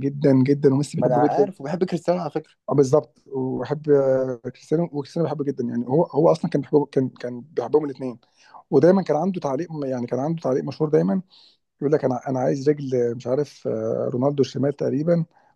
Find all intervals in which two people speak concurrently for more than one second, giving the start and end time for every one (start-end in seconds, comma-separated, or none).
none